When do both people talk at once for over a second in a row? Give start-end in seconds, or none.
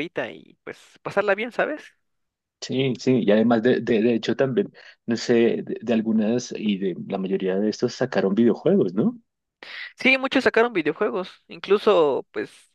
none